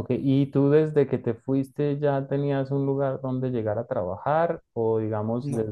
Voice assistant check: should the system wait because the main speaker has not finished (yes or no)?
yes